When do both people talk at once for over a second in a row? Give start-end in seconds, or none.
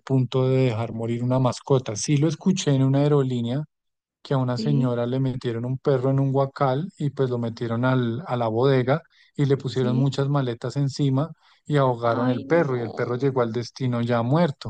12.0-13.2